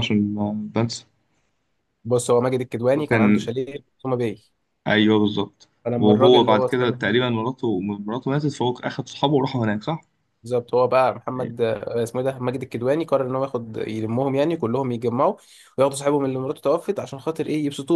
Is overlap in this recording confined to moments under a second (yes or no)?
no